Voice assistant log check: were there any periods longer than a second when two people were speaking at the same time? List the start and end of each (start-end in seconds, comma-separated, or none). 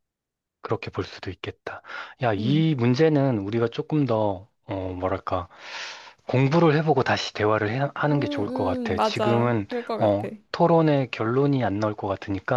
8.1-10.3